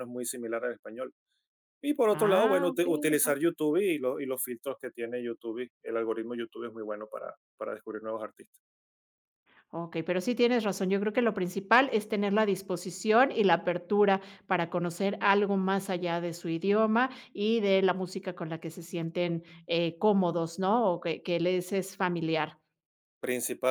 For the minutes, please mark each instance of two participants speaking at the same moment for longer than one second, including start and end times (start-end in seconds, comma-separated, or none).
2.1-3.3